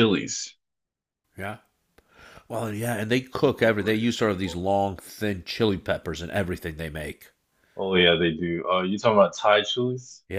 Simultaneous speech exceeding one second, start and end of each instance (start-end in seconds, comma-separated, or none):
3.4-4.7